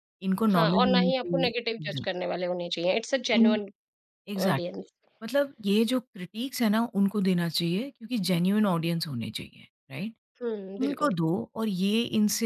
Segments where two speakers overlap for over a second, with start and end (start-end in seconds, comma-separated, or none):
0.5-2.0